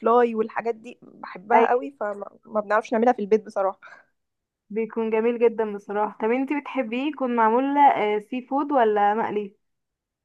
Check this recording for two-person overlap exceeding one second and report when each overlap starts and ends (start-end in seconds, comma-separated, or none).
none